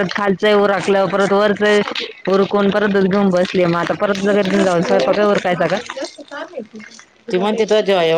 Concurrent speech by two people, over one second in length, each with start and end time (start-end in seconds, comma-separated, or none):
4.2-5.8